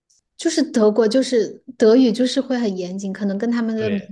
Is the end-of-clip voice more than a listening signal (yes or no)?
yes